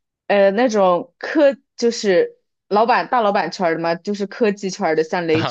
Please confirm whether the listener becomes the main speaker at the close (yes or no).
yes